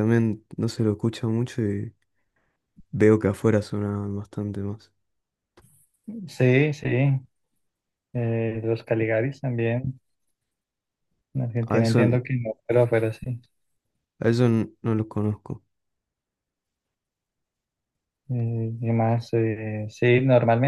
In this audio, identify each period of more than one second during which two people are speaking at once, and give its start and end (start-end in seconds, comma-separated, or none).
none